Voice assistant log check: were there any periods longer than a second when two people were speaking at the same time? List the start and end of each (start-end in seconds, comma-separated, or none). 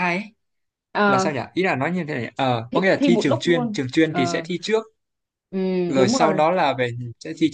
2.7-4.5